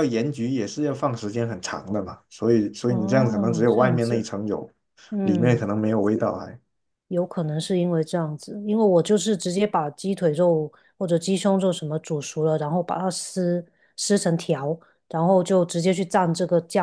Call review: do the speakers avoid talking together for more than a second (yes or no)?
no